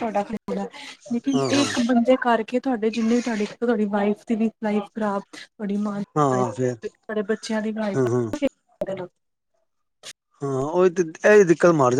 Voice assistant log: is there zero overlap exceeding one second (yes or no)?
yes